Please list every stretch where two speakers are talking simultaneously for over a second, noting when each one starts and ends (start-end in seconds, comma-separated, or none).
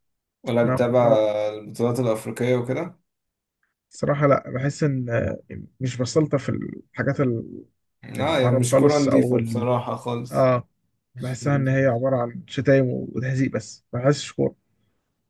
8.2-9.7